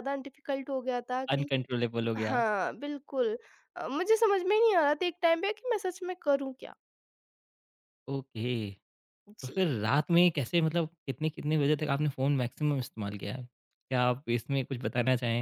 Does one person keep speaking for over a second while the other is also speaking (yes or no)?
no